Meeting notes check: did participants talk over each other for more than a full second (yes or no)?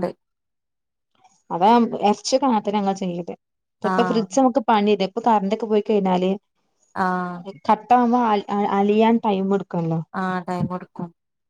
no